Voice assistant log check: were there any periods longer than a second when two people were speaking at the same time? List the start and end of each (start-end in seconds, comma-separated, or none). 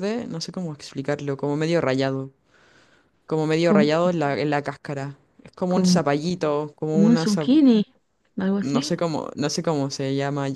none